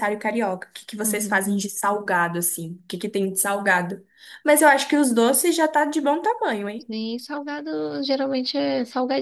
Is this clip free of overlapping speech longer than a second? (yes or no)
yes